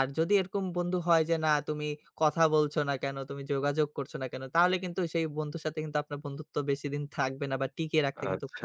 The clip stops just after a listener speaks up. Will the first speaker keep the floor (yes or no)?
no